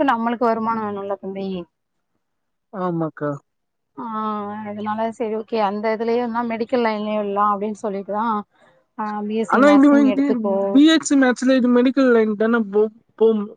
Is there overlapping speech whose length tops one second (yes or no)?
no